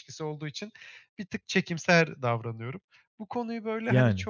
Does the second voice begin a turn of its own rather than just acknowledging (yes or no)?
no